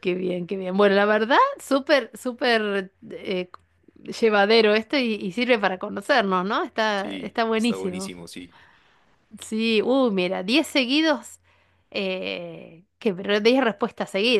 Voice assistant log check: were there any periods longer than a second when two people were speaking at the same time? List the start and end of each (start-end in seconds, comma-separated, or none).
6.9-8.1